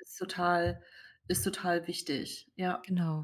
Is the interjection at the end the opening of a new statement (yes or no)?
yes